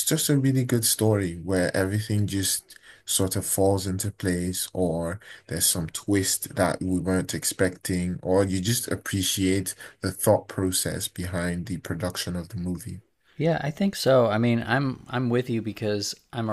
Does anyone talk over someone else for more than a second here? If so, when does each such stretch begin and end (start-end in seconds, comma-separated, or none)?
none